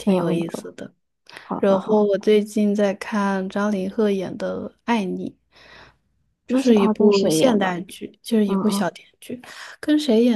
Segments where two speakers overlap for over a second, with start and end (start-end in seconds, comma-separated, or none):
6.5-7.8